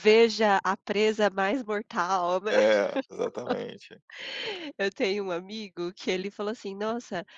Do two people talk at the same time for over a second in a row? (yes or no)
no